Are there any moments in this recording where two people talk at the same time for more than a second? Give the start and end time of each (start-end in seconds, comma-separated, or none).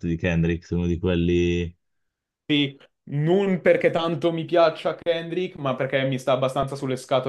none